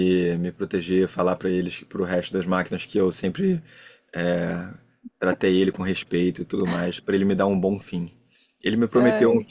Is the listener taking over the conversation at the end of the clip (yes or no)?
no